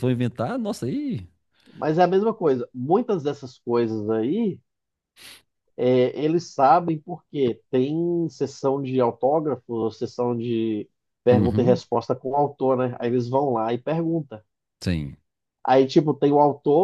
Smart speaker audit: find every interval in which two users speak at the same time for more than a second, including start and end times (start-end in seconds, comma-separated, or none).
none